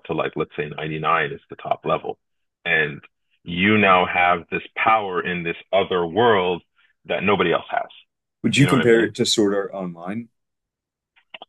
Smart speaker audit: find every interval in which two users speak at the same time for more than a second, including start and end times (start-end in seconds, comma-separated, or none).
none